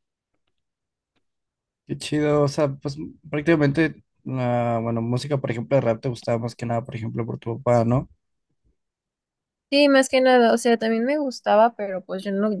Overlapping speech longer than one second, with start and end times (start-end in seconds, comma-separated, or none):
none